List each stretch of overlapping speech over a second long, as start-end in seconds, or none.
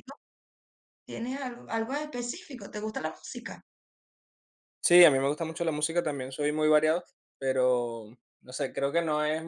none